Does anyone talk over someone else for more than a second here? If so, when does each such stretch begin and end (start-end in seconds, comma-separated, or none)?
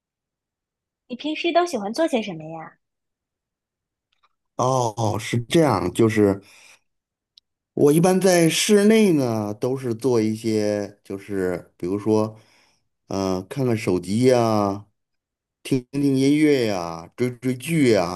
none